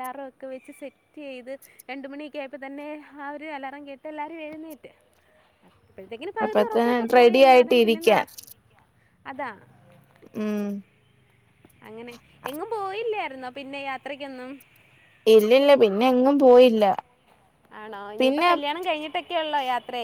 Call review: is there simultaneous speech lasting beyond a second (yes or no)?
yes